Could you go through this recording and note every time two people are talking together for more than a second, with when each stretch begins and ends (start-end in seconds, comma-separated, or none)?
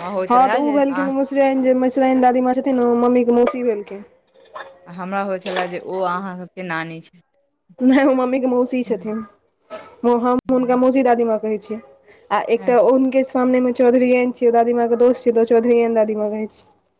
none